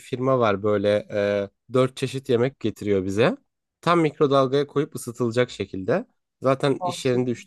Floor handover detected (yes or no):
no